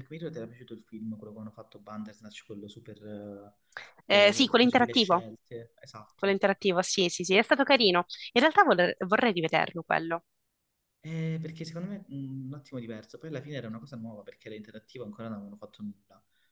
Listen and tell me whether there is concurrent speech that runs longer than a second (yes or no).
yes